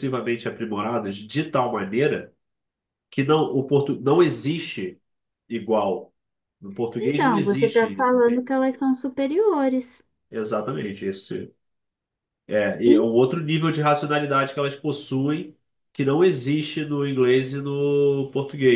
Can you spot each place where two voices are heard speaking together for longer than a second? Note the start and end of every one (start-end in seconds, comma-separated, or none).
7.0-8.5